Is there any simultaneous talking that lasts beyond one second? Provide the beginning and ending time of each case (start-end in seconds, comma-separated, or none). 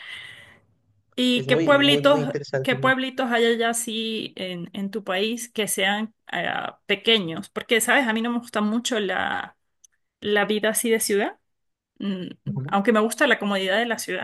1.4-2.8